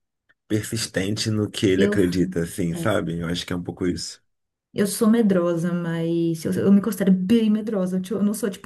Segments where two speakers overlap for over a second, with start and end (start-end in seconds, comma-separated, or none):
none